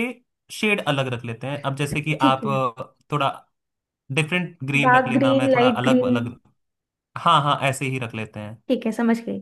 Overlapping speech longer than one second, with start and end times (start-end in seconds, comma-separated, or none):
4.8-6.2